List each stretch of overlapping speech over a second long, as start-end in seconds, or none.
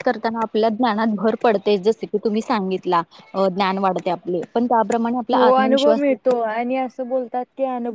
5.3-6.7